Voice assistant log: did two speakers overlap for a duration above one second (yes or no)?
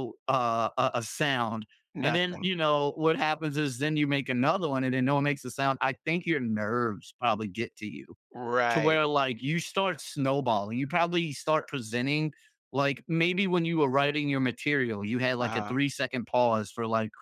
no